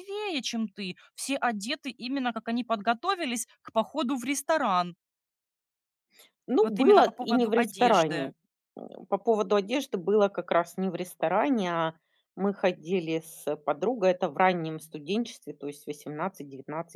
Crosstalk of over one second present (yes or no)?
yes